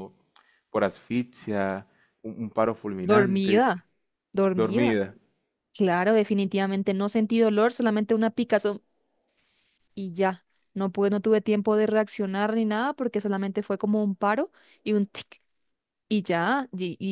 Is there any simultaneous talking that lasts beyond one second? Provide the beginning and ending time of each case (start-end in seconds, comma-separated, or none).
none